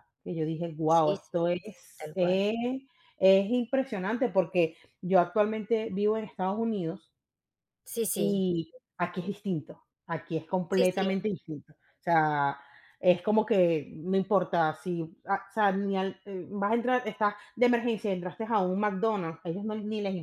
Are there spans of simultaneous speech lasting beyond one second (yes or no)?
yes